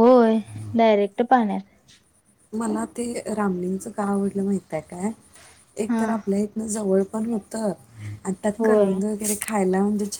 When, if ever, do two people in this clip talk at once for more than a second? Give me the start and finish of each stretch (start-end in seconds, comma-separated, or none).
none